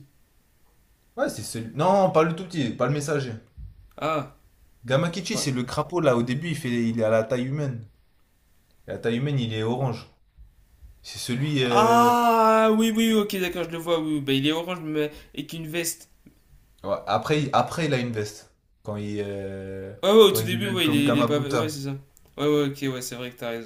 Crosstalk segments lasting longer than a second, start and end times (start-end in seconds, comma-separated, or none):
20.0-21.8